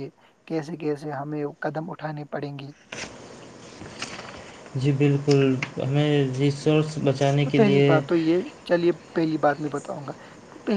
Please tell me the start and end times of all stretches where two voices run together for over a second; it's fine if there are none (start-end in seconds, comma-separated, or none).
none